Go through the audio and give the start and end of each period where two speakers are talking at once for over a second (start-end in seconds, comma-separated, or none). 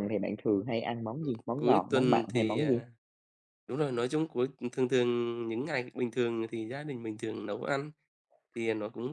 1.6-2.8